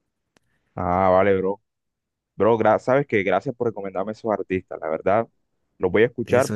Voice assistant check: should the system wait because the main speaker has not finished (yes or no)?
yes